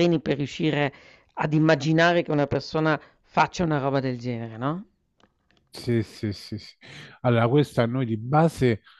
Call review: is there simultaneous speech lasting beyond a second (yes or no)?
no